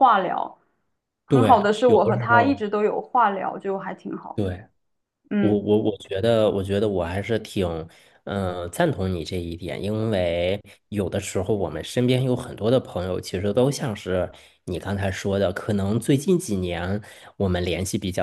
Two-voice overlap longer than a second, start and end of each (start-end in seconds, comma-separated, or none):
1.3-2.6